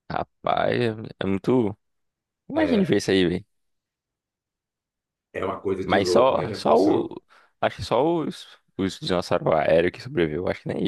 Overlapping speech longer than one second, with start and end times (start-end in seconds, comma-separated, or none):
5.9-7.1